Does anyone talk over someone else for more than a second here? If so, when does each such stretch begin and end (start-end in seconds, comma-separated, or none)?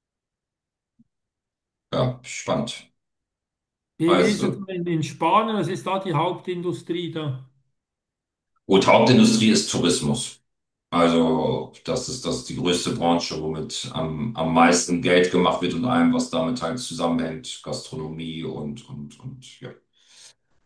none